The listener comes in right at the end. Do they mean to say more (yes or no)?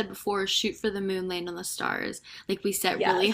no